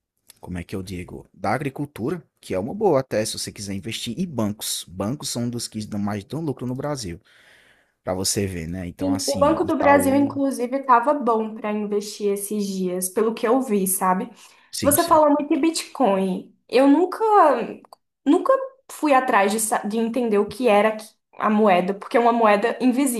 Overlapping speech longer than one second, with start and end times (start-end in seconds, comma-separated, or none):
9.0-10.4